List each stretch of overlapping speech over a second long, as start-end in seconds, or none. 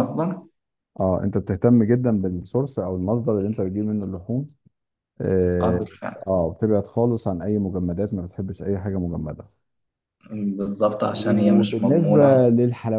11.1-12.4